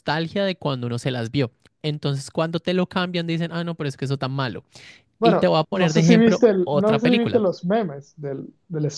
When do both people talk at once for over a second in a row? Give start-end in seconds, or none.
5.2-7.4